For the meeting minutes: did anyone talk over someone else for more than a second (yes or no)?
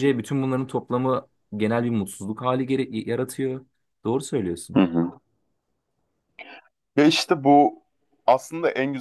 no